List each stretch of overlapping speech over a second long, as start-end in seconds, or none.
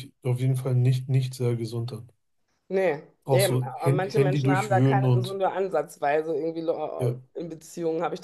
3.2-5.4